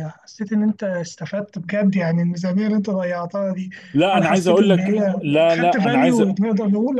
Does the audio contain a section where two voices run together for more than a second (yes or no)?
yes